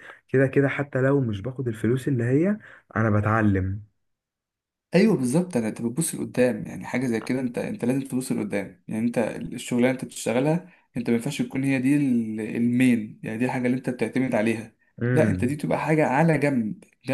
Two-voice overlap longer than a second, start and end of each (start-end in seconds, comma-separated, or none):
none